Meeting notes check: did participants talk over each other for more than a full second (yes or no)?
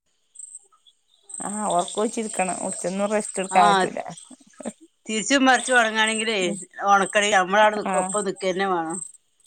no